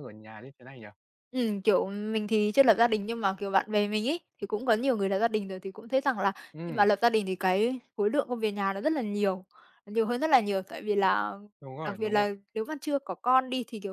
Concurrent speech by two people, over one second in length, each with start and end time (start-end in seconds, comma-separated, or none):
none